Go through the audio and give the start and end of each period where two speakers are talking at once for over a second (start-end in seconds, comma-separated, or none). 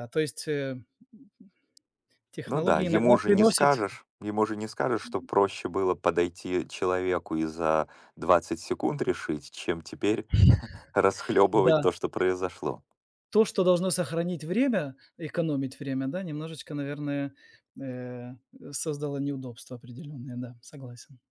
2.5-3.7